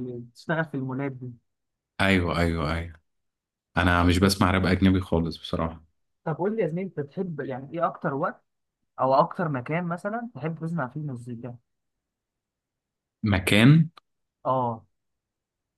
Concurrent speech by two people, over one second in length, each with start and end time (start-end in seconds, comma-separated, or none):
none